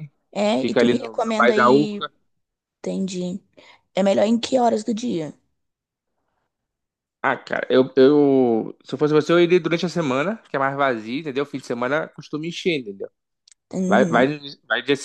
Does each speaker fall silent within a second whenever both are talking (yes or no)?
no